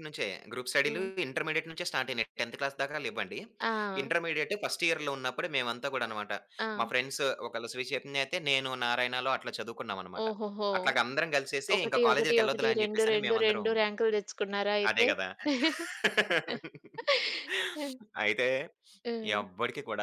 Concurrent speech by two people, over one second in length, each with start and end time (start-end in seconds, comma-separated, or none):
11.8-13.7